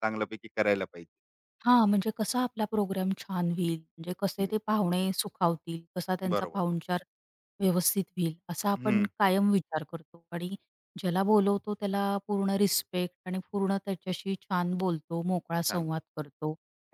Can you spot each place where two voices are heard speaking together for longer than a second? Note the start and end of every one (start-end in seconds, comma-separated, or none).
none